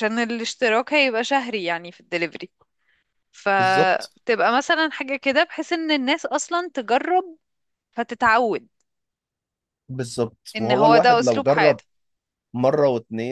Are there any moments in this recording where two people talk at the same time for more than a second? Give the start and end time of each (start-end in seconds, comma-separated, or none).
10.6-11.8